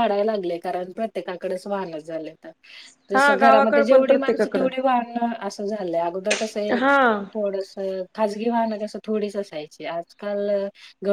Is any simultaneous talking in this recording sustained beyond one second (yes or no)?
yes